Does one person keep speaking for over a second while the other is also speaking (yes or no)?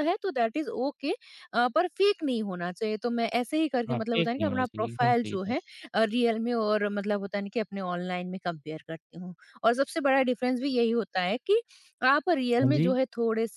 yes